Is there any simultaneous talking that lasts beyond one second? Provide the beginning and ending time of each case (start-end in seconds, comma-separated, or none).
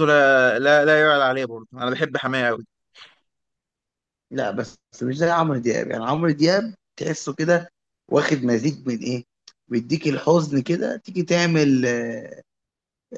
none